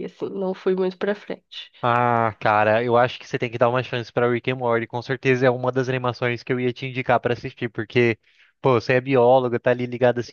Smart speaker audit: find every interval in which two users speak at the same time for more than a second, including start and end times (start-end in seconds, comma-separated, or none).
none